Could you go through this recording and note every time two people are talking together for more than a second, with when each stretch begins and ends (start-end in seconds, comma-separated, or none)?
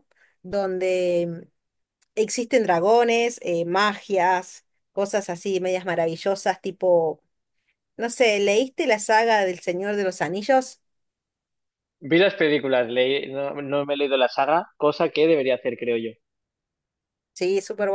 none